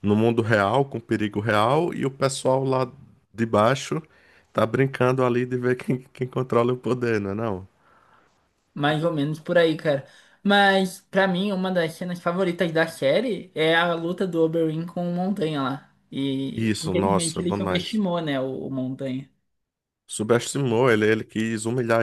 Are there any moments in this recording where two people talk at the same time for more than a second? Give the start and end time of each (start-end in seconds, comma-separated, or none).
16.5-18.0